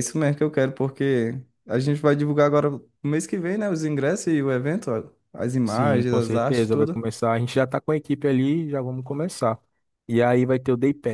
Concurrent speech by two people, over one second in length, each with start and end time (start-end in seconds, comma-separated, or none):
5.6-7.0